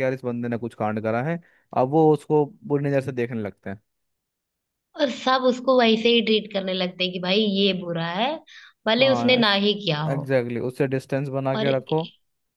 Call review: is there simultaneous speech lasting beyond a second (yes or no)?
no